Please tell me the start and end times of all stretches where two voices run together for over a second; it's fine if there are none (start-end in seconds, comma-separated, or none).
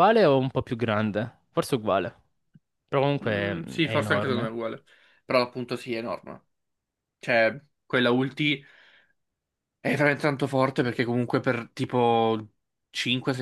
3.2-4.5